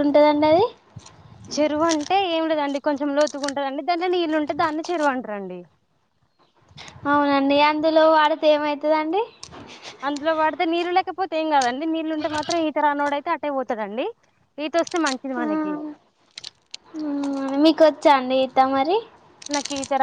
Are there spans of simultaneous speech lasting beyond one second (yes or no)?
no